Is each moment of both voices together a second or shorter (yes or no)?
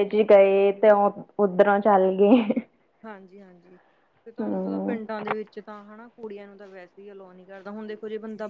yes